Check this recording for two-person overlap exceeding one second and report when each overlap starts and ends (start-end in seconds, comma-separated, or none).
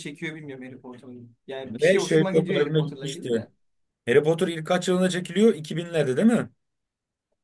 1.7-3.5